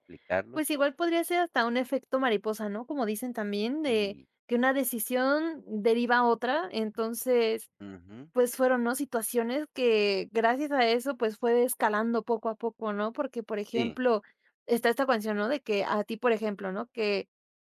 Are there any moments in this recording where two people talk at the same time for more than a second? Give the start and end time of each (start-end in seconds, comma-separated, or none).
none